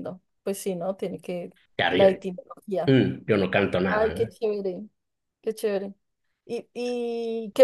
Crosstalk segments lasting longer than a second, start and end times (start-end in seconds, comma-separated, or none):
none